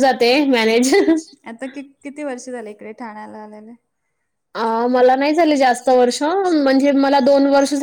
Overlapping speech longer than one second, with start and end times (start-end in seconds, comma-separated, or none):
none